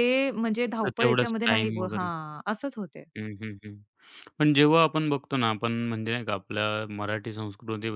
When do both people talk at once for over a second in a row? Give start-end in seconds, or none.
0.8-2.1